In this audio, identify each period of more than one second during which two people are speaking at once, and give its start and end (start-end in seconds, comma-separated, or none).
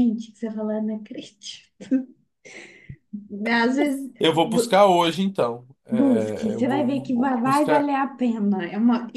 5.9-7.9